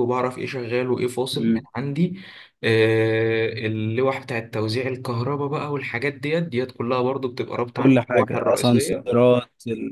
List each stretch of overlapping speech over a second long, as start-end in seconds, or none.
7.8-9.2